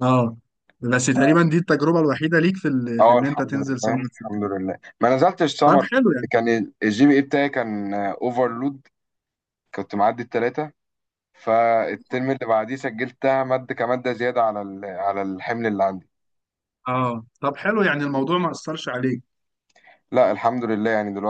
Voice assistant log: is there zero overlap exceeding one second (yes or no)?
no